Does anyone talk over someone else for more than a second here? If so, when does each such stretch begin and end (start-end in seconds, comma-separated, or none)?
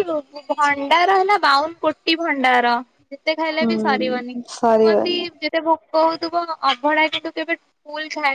3.6-5.2